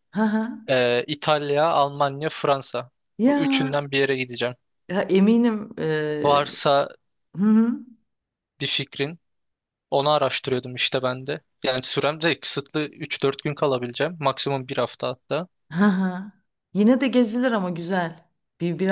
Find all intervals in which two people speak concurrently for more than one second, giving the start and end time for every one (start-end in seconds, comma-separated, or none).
none